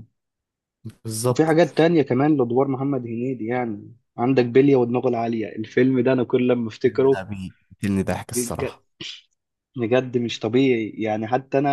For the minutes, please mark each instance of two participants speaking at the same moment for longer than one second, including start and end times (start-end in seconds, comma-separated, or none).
none